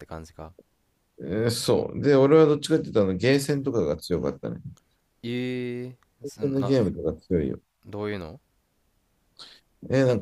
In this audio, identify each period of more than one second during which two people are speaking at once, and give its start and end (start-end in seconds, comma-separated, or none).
none